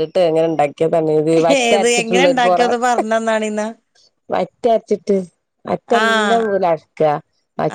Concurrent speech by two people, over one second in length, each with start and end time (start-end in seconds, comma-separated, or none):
none